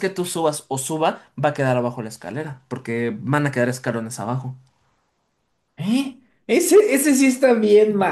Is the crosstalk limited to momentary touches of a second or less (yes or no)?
yes